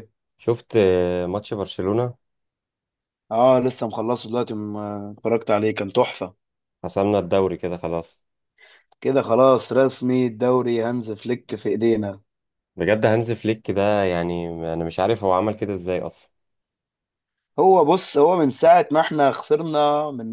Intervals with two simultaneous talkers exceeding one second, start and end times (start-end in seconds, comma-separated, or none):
none